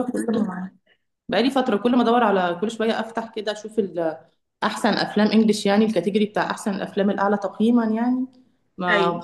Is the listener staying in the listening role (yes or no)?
yes